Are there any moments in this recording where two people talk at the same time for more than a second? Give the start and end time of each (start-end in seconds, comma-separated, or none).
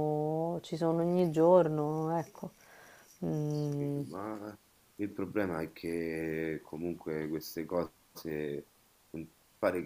none